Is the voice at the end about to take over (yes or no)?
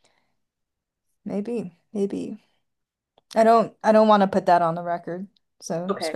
yes